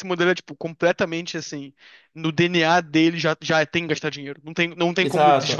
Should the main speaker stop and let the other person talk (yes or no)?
yes